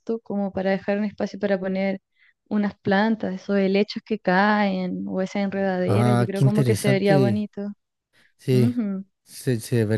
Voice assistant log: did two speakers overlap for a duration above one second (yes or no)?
yes